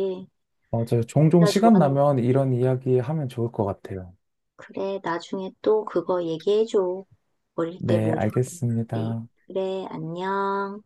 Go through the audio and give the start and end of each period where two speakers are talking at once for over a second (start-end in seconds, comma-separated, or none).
7.8-9.3